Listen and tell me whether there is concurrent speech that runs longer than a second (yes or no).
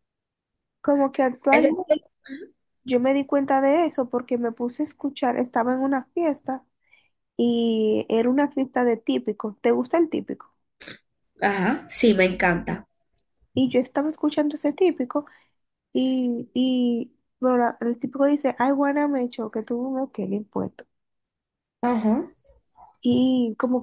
no